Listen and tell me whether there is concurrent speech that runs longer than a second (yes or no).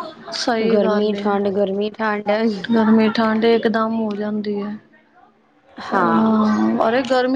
no